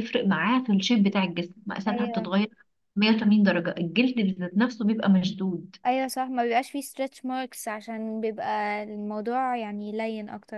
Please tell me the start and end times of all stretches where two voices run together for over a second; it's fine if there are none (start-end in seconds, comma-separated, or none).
none